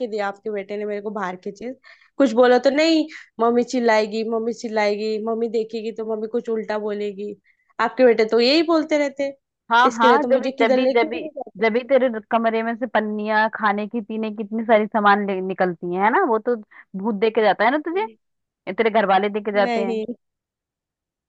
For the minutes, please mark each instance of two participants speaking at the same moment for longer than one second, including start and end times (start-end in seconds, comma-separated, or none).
9.9-11.6